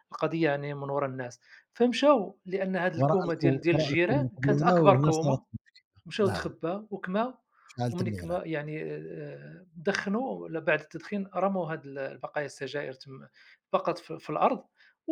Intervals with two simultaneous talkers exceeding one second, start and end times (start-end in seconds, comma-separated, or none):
3.0-5.4